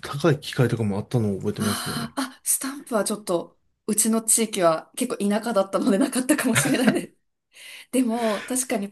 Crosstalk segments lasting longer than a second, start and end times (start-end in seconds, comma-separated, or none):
none